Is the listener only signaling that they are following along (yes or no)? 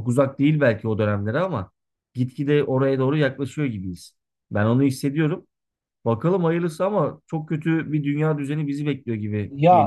no